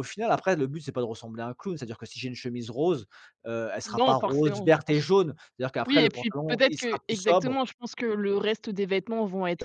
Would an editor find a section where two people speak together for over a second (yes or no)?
yes